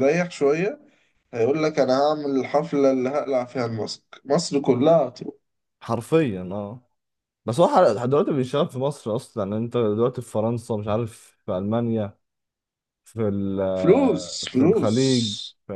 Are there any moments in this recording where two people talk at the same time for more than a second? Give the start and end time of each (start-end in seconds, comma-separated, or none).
13.8-15.0